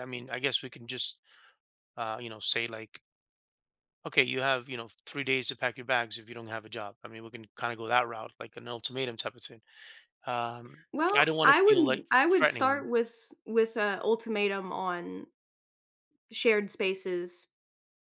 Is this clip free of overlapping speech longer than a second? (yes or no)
no